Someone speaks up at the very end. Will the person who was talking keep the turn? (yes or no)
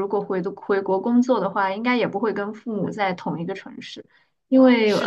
yes